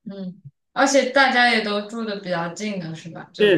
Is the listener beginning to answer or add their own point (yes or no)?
yes